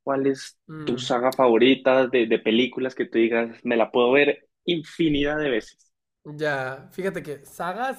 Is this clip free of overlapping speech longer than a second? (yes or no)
yes